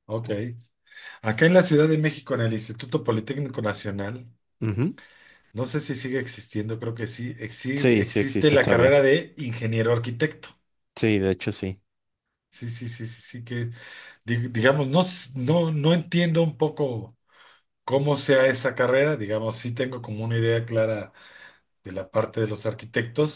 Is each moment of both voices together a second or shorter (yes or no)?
no